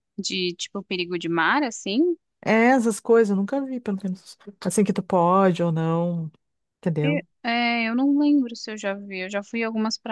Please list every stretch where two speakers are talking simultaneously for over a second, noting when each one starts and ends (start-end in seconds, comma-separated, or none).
none